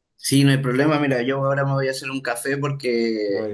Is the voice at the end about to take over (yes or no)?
no